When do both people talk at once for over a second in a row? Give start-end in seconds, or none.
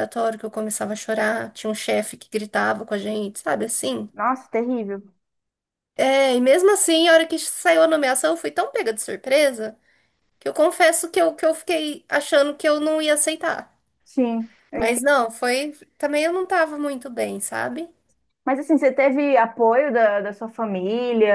none